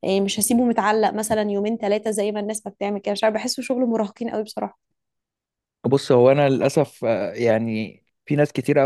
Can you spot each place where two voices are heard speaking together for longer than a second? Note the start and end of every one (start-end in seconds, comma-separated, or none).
none